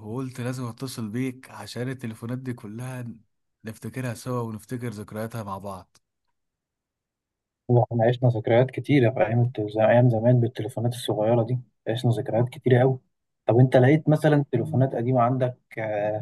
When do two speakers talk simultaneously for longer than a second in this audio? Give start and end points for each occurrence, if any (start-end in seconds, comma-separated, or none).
none